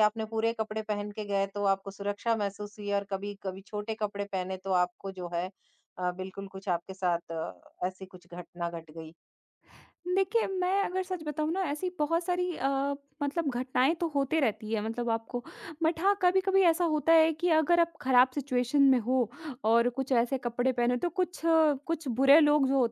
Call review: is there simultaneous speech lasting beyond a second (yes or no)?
no